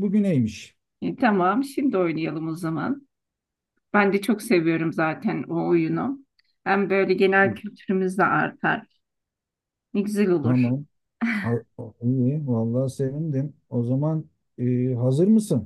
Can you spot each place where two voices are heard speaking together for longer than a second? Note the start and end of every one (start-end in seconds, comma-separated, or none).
none